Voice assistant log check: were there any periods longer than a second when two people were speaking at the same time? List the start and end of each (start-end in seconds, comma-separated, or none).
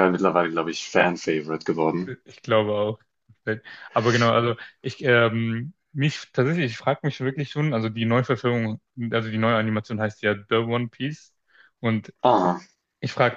none